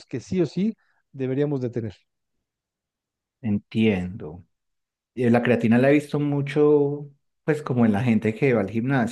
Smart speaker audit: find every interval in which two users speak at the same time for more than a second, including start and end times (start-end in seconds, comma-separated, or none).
none